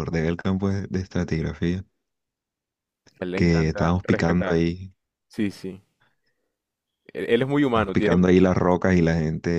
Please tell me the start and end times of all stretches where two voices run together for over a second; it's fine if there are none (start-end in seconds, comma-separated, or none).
3.4-4.6